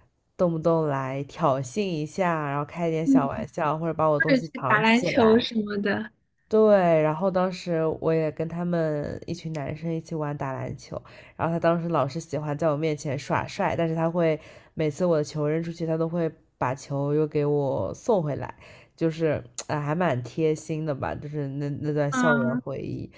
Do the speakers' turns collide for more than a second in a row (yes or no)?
yes